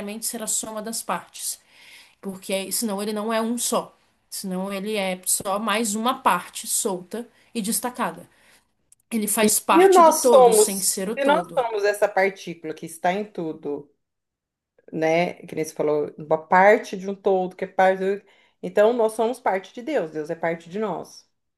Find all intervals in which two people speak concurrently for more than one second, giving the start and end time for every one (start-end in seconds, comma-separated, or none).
9.7-11.7